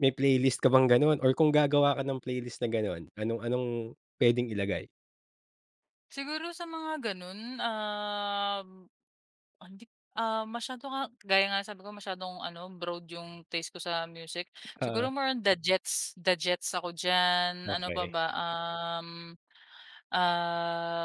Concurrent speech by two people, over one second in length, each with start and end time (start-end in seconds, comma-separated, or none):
none